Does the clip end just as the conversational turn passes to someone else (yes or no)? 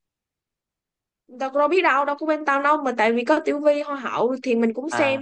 yes